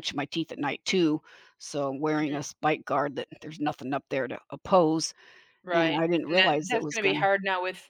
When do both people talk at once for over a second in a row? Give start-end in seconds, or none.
5.7-7.3